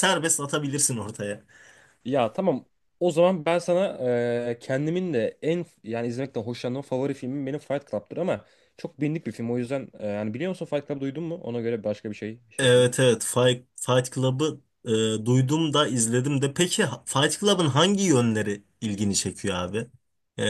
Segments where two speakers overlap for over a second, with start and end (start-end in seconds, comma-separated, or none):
none